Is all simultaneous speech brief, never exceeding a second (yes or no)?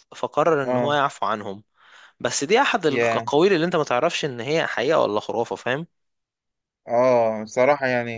yes